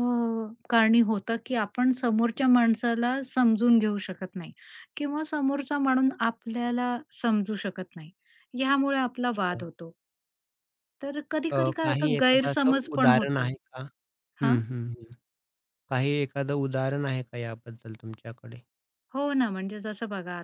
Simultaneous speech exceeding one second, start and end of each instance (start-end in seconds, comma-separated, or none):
11.5-13.5